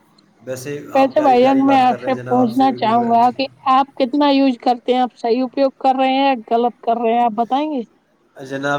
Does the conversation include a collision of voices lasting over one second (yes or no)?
yes